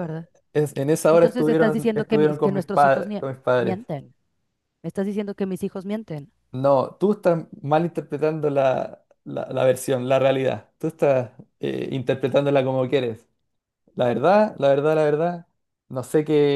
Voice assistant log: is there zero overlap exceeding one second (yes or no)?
no